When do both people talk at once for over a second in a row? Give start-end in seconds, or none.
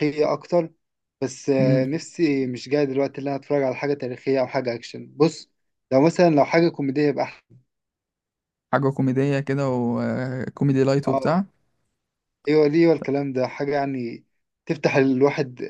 none